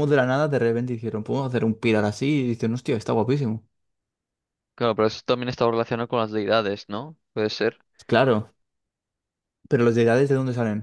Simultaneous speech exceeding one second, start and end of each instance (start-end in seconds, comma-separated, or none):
none